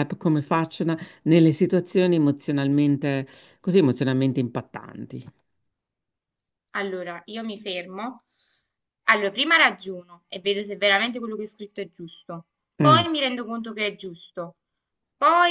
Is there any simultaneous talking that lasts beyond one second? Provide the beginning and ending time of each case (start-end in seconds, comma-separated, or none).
none